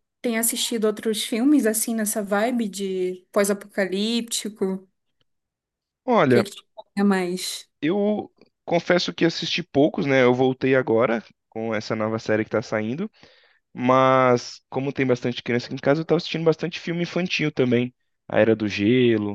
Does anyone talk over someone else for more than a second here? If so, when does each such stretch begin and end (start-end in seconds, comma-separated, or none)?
none